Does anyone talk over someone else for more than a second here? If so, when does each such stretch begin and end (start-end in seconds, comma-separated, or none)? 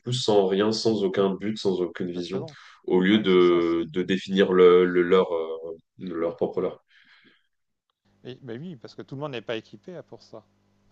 none